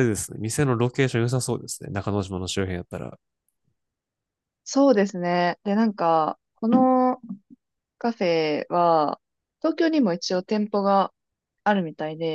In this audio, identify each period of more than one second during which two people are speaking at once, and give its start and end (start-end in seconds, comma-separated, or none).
none